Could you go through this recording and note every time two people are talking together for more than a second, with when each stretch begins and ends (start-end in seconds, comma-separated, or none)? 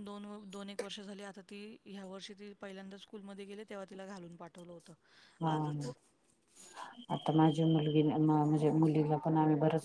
none